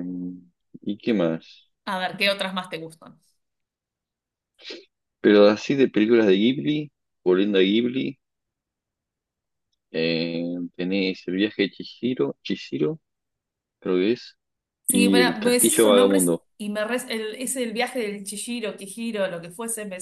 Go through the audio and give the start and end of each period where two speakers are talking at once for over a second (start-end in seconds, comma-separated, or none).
14.9-16.5